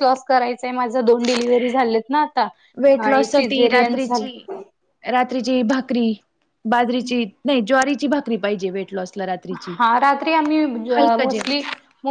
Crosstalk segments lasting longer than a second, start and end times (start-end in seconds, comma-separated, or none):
3.1-4.4